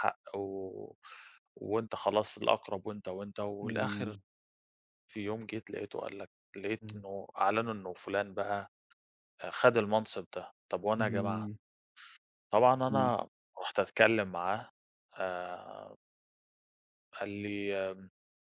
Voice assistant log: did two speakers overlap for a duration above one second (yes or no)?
no